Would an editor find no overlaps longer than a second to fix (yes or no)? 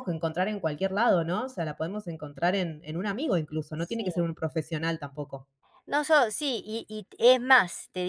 yes